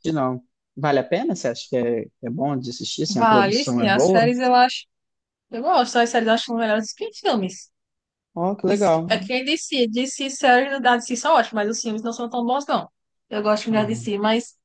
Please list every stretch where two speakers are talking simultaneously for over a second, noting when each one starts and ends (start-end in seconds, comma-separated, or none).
3.1-4.3